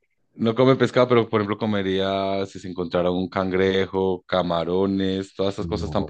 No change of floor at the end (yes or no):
no